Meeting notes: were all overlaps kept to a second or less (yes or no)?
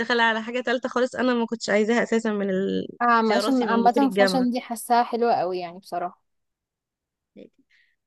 no